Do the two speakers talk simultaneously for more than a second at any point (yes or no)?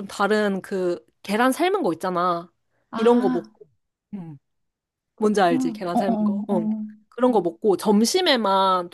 yes